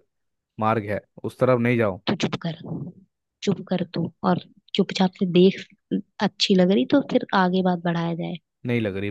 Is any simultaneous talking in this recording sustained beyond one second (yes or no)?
no